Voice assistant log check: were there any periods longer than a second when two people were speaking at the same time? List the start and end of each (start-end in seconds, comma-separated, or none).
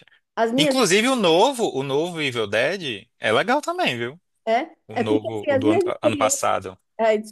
4.9-6.4